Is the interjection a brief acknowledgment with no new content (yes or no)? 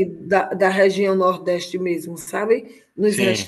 yes